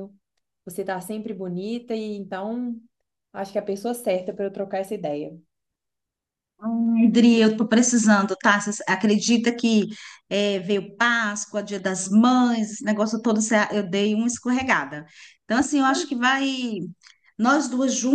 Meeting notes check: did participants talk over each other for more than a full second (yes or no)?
no